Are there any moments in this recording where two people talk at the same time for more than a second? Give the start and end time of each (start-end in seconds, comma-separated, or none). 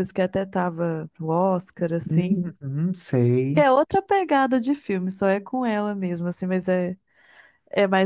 none